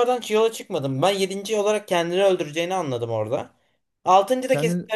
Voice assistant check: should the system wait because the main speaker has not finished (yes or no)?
yes